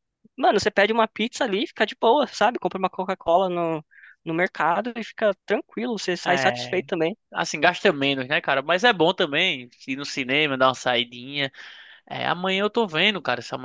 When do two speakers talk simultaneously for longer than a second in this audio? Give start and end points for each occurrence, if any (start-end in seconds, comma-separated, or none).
none